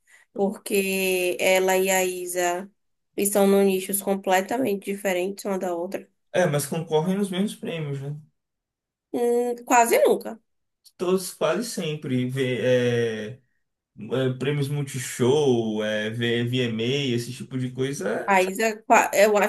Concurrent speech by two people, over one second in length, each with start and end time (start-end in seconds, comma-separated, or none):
none